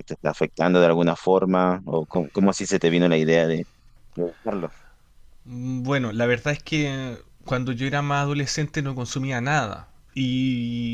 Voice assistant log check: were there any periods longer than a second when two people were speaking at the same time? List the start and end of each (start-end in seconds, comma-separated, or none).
none